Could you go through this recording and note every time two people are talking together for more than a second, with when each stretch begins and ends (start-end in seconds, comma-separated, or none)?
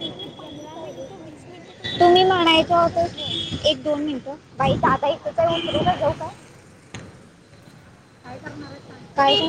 2.0-3.3